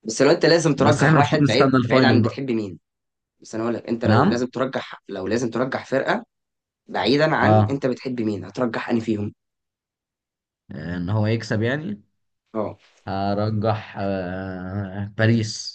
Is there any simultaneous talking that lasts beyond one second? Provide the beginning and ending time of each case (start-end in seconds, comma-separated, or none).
0.8-2.4